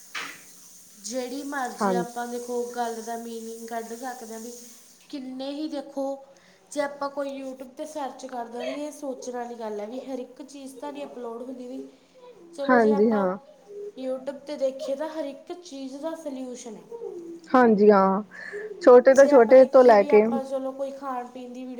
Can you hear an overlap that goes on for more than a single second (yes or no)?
no